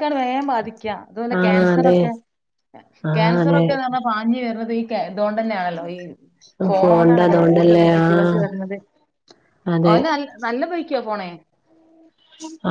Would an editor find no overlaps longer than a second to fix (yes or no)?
no